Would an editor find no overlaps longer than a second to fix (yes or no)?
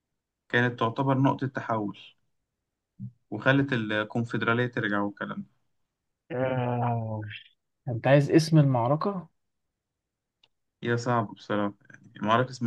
yes